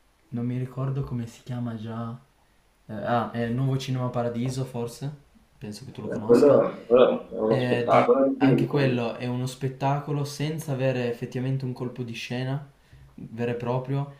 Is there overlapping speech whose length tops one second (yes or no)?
yes